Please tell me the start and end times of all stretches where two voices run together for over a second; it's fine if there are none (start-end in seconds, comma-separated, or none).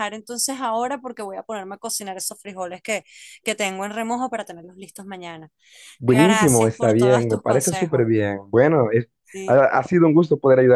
6.0-8.0